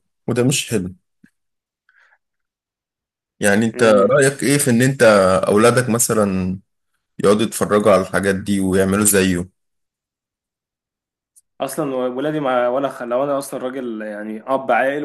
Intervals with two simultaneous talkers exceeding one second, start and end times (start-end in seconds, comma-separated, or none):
none